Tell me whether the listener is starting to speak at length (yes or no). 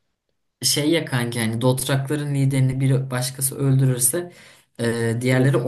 no